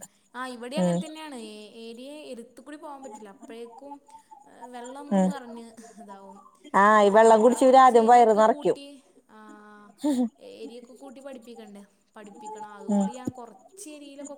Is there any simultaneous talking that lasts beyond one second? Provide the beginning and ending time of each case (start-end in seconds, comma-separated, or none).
7.1-8.8